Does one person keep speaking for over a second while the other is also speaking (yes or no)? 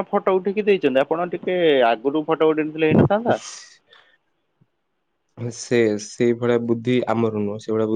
no